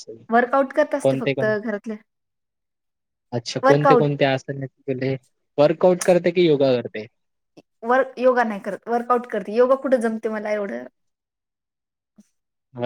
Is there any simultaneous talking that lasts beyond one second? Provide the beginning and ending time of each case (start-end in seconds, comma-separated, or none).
none